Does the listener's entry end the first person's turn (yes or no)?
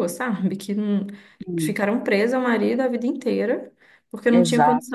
no